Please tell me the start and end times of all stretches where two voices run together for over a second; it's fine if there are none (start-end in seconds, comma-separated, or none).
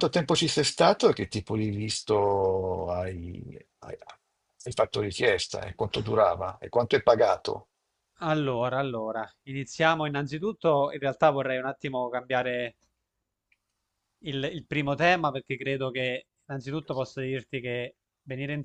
none